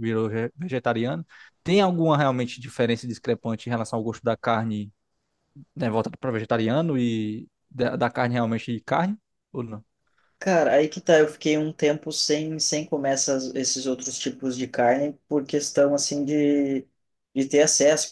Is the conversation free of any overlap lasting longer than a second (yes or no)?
yes